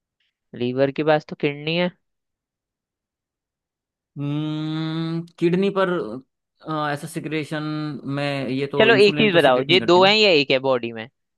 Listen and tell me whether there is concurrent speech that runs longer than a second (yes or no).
yes